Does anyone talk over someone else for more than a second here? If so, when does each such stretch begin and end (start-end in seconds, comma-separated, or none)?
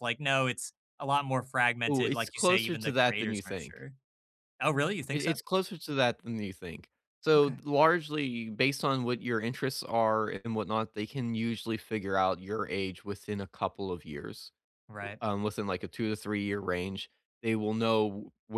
1.9-3.9